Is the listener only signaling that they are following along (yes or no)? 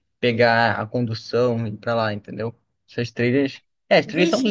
no